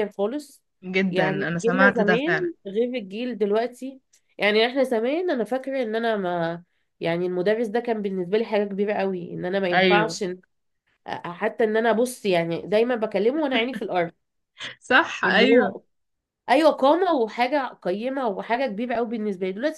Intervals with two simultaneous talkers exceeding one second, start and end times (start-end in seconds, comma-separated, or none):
1.1-2.5